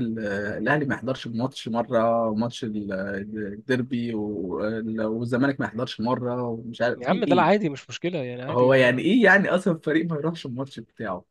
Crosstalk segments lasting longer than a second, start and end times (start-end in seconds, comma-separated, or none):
none